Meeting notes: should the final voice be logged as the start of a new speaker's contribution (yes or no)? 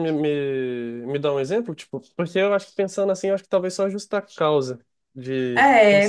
yes